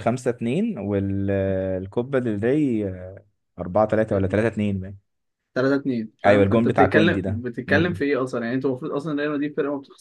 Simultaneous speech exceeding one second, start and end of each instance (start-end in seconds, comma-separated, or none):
6.2-8.0